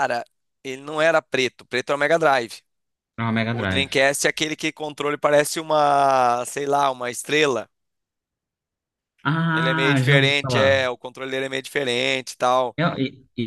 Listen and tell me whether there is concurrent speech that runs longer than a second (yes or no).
yes